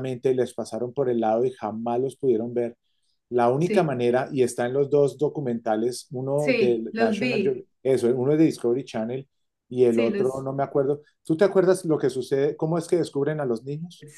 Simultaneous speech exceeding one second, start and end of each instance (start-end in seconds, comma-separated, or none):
6.3-7.7